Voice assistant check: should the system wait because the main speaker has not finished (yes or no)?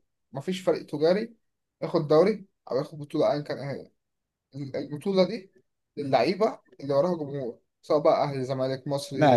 no